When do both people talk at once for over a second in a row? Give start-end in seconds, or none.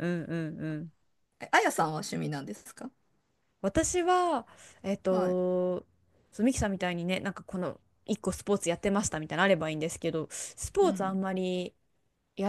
none